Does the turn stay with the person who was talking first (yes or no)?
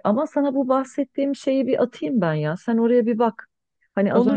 no